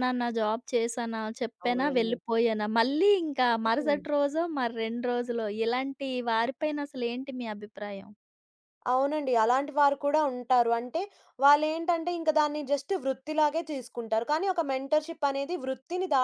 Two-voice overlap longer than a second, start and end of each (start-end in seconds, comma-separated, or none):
none